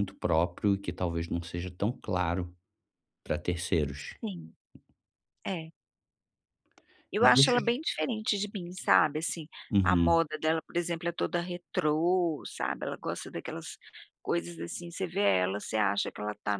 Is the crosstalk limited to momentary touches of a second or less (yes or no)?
yes